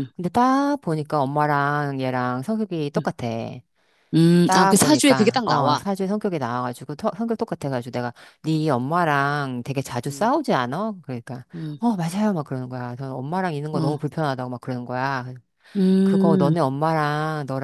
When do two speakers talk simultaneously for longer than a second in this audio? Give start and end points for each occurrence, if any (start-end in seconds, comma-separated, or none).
4.5-5.8